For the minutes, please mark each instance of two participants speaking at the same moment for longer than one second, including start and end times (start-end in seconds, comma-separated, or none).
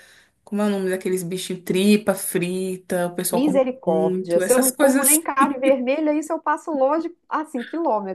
3.3-5.2